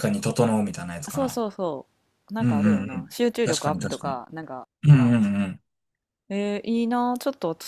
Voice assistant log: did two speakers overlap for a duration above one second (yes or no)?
yes